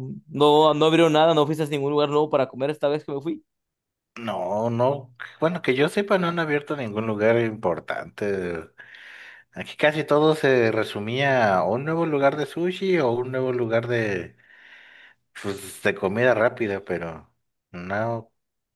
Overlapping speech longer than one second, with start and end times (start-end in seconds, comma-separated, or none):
none